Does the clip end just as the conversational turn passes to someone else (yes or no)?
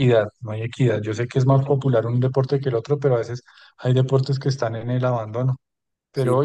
no